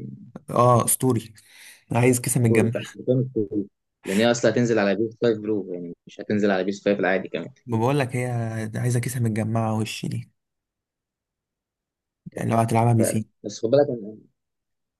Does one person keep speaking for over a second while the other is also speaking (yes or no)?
no